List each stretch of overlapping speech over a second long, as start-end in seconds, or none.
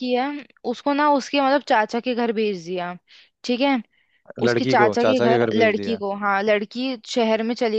4.4-6.0